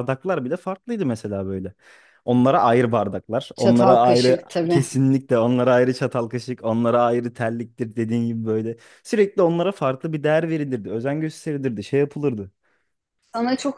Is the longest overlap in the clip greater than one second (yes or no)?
yes